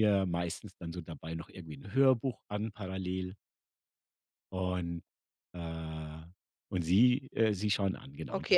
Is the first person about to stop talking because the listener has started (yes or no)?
yes